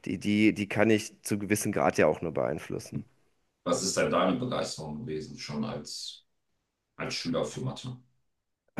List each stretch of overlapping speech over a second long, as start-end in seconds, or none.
none